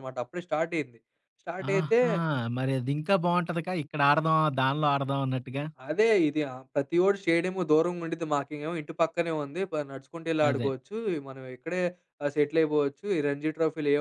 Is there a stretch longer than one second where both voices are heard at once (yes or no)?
no